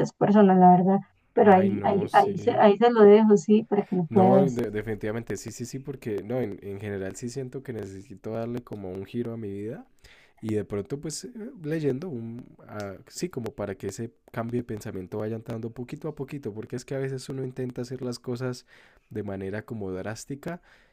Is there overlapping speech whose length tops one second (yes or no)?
yes